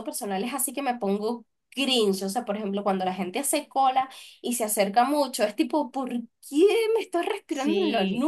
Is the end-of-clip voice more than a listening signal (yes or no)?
yes